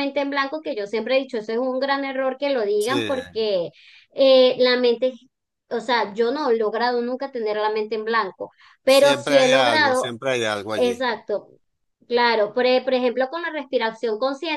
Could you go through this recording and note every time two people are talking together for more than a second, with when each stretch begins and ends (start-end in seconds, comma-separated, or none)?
8.8-10.1